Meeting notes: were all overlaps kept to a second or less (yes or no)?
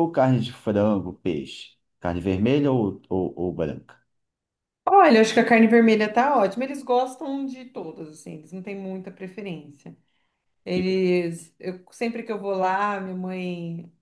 yes